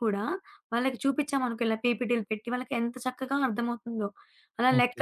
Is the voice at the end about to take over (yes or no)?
yes